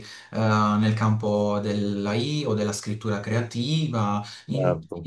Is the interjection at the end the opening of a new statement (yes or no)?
no